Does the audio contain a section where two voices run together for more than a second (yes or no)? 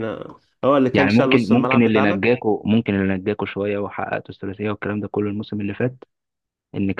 yes